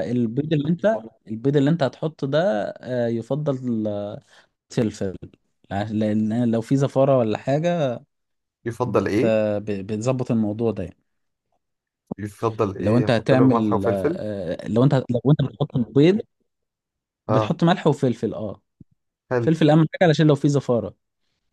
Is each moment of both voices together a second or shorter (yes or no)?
no